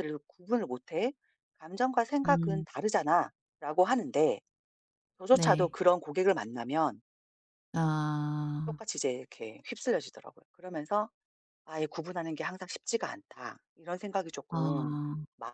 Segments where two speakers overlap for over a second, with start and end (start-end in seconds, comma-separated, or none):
none